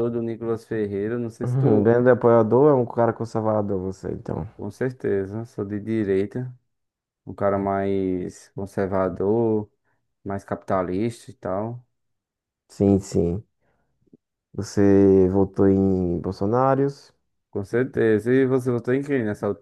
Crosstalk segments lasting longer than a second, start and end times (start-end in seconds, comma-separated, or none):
none